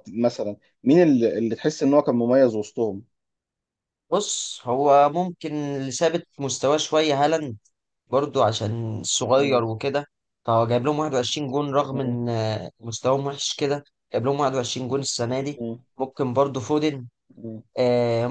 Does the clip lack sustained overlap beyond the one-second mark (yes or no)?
yes